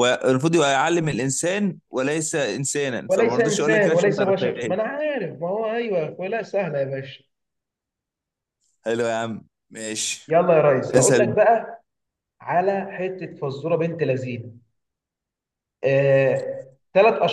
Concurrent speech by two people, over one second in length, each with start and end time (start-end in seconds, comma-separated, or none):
3.1-4.7